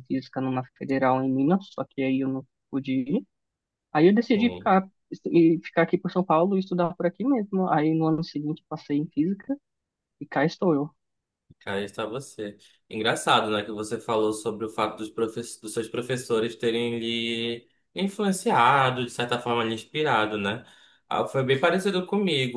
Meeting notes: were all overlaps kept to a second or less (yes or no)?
yes